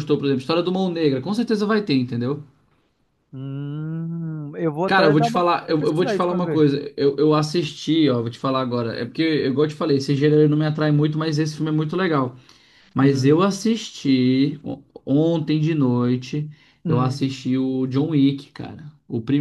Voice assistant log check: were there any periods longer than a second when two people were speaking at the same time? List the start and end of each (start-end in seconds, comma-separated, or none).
4.8-6.7